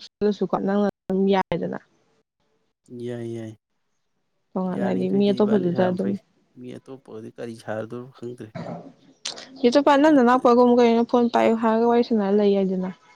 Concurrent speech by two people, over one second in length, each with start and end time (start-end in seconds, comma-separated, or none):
4.8-6.2